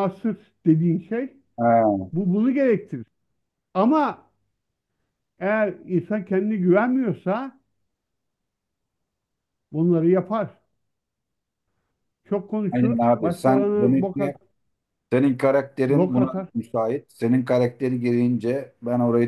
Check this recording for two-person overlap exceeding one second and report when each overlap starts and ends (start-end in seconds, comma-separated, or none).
12.7-14.3